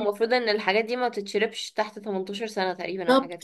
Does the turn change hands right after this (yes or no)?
yes